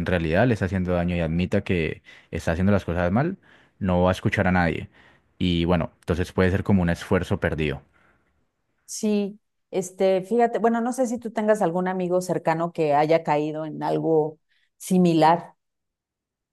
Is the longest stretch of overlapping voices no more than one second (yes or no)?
yes